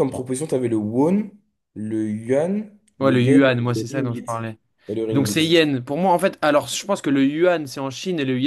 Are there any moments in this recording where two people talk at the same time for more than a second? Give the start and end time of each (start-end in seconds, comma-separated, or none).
3.0-4.4